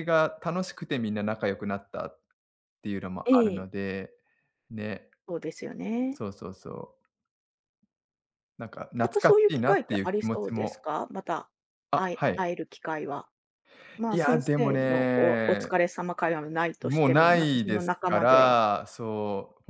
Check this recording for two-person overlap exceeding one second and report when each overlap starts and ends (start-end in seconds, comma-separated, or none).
9.0-10.9, 14.1-15.7, 16.8-18.6